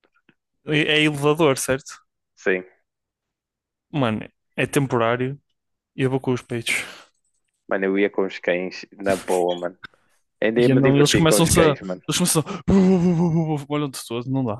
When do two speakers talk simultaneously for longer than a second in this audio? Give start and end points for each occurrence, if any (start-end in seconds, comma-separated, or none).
10.5-12.0